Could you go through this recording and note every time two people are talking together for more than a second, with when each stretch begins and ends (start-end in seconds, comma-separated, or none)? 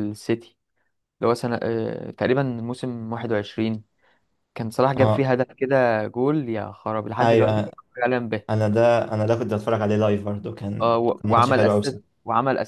10.8-12.0